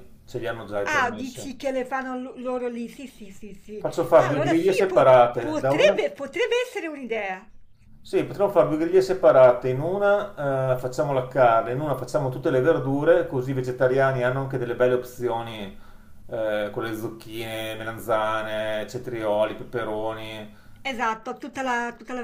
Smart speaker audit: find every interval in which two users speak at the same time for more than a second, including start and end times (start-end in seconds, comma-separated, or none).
3.8-6.0